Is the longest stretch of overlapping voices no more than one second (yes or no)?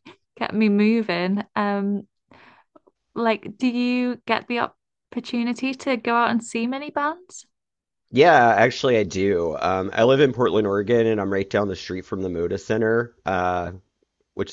yes